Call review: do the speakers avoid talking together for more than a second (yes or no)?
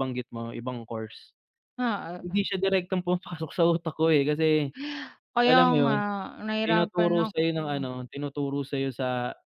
no